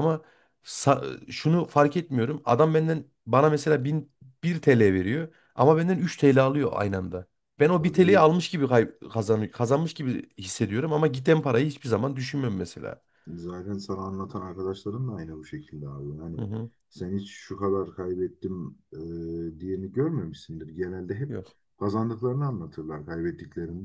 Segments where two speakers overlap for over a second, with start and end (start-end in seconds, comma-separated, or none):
none